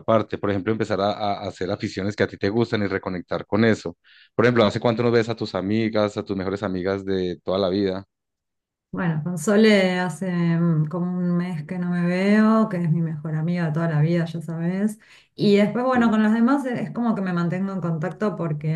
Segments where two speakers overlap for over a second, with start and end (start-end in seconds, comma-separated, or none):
none